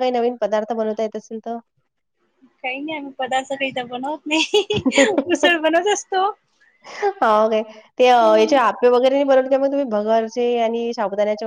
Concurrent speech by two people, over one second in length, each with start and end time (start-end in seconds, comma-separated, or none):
none